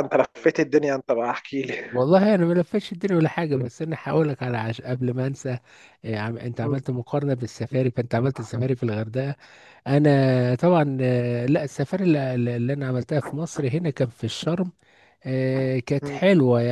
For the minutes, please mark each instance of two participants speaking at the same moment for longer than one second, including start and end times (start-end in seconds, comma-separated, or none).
none